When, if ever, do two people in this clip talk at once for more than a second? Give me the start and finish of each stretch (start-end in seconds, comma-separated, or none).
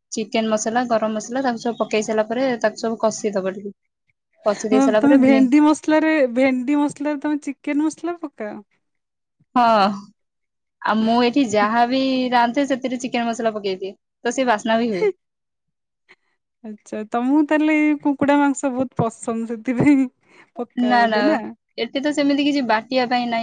none